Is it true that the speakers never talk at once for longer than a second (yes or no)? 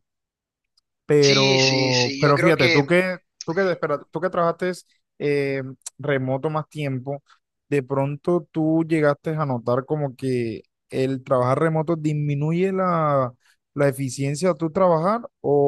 no